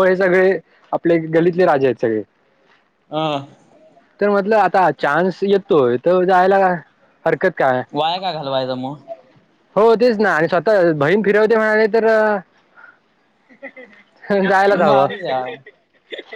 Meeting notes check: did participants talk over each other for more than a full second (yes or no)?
no